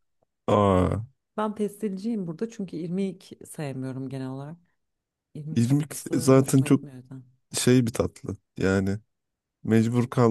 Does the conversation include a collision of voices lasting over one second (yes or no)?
yes